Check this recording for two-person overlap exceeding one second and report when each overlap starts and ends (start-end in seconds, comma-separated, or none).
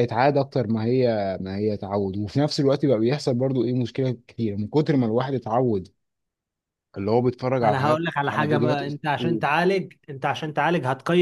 7.6-9.4